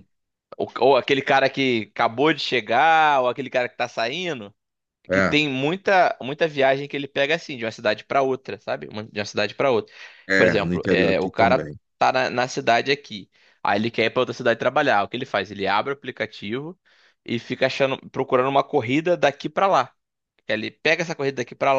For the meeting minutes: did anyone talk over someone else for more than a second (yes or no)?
yes